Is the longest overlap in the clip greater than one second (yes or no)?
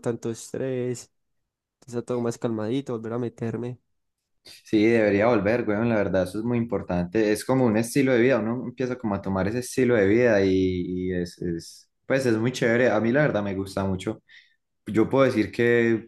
no